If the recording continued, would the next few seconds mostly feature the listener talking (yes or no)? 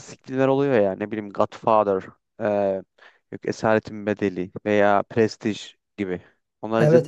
yes